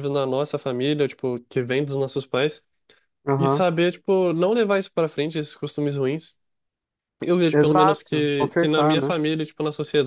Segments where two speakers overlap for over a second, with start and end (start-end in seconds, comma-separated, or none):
7.5-9.1